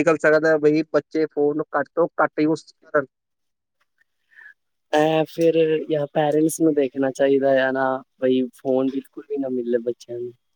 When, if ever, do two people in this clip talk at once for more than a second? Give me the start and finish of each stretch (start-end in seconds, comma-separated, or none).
none